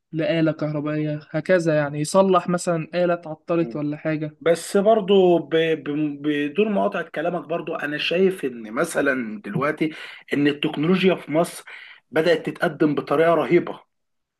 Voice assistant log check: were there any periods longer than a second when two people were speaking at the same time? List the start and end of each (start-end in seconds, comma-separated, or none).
none